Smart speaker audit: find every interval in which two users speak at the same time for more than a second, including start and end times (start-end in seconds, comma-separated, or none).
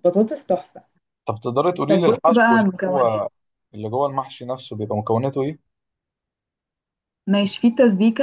1.9-3.2